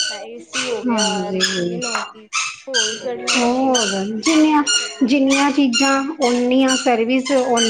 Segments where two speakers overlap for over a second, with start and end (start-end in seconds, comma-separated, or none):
3.4-4.6